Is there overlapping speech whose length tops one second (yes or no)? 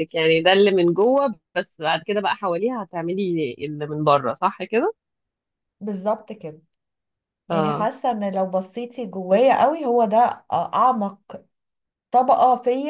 no